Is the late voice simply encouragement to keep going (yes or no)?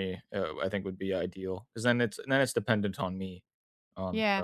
no